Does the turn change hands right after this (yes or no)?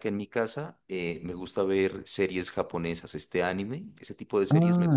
yes